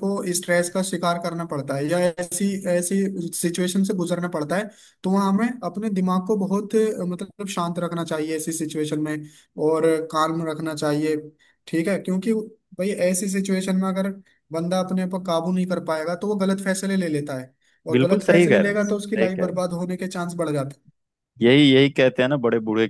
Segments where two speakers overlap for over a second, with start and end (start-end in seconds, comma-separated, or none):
17.9-19.6